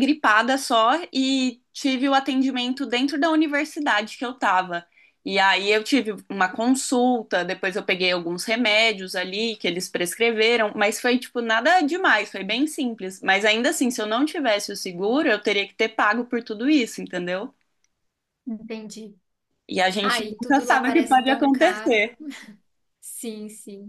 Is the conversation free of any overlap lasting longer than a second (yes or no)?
no